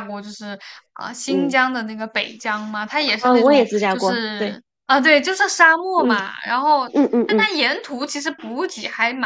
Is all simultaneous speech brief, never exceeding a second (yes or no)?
no